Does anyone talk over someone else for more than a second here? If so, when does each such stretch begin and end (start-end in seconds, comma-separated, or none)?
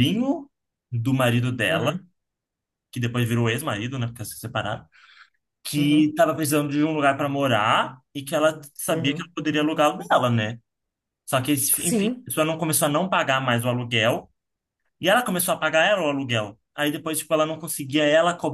none